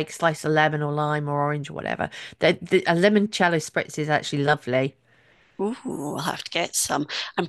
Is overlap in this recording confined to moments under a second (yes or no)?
yes